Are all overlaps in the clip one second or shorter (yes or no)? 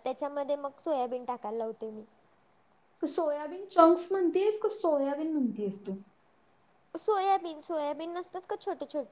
yes